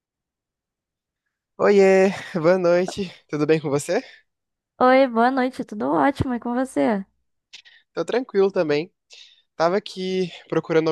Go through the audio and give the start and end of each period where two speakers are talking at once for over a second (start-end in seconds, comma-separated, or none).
none